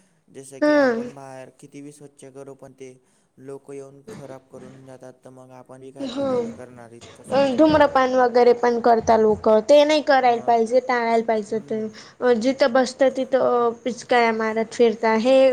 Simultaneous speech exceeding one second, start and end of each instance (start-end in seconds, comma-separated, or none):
none